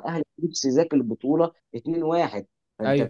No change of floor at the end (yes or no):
yes